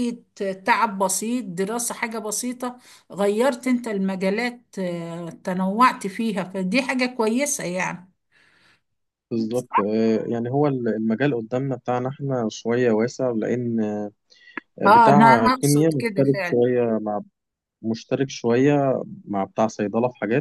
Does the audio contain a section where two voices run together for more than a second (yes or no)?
yes